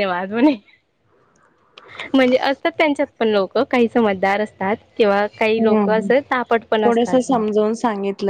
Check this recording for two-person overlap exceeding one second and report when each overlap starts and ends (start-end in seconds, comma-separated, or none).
5.8-7.4